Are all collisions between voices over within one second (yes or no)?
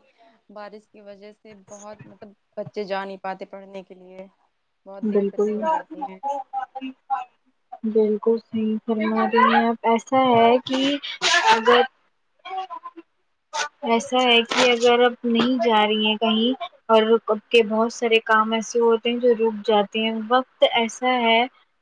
yes